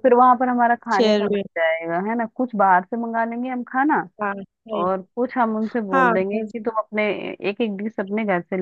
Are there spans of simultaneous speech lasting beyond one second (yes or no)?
no